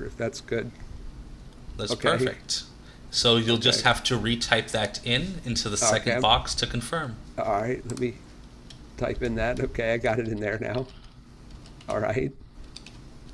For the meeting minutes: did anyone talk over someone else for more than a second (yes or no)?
no